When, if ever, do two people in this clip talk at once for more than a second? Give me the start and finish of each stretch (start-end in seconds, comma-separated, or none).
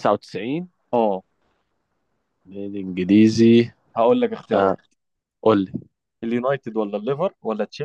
none